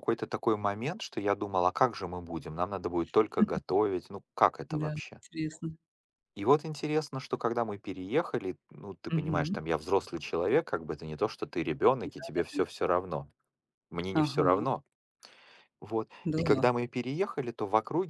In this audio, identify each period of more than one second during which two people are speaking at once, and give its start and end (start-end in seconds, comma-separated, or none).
none